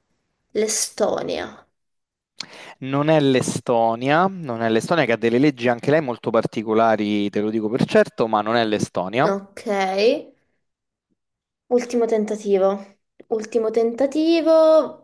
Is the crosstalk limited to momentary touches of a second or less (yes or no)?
yes